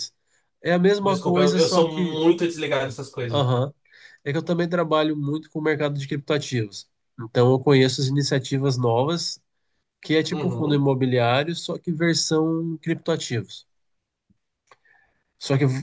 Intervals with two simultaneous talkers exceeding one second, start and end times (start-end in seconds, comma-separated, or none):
1.0-2.2